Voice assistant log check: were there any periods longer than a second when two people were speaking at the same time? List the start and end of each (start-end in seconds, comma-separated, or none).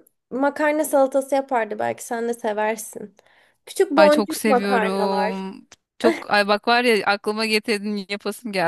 4.0-5.5